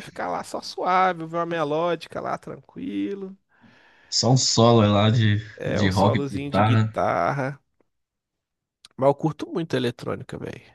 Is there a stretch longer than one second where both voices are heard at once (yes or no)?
yes